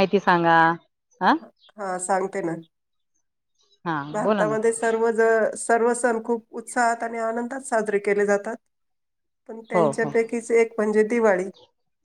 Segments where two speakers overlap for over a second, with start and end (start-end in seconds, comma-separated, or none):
none